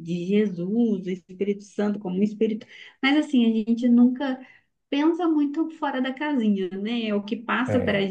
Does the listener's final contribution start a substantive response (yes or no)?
no